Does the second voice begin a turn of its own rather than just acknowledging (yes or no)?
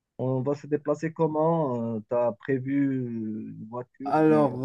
yes